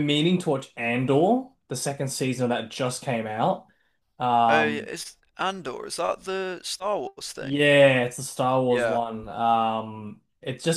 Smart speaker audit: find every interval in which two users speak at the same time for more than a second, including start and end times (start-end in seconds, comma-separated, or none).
none